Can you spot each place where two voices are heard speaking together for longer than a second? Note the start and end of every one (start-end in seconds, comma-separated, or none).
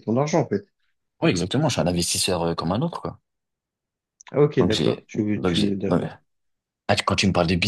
4.6-6.1